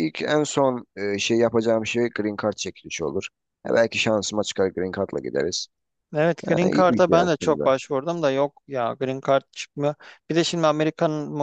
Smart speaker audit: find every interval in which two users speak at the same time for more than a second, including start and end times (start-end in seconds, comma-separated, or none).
6.5-7.7